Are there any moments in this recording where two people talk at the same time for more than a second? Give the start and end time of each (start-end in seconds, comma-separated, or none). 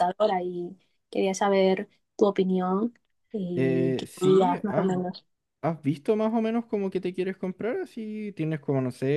3.5-4.9